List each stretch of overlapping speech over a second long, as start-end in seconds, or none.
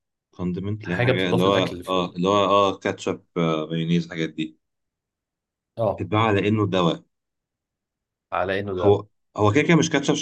0.8-2.2